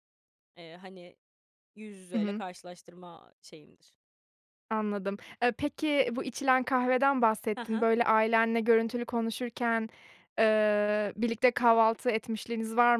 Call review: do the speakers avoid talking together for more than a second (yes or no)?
yes